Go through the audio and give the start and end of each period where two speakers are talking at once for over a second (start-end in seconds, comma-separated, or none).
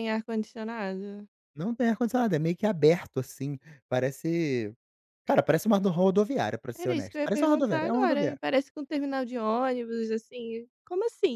6.7-8.4